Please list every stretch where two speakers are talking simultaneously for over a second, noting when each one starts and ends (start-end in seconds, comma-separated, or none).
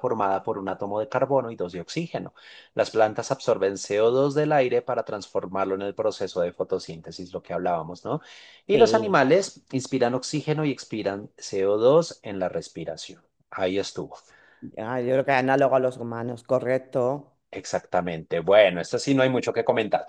none